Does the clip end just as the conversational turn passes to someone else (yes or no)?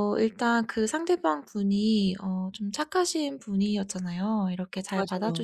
no